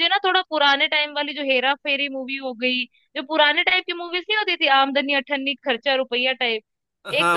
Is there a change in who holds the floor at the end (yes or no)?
no